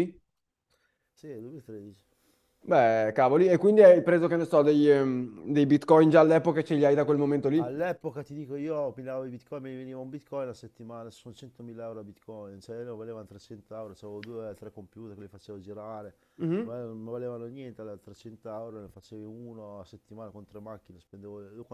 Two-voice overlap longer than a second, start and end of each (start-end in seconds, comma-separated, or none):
none